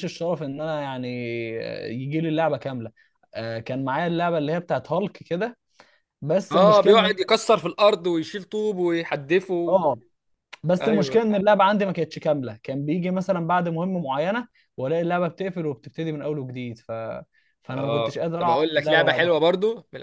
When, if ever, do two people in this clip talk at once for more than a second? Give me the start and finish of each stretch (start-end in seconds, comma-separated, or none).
17.7-19.4